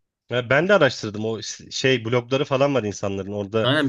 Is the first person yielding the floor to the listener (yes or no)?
yes